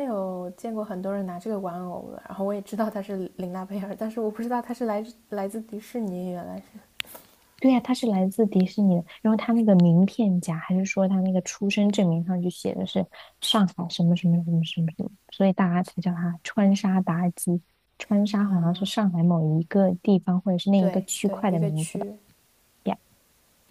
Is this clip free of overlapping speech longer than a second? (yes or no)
no